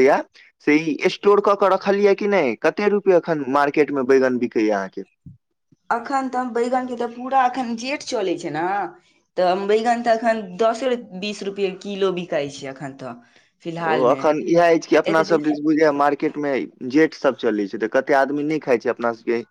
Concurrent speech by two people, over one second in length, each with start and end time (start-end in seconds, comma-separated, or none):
none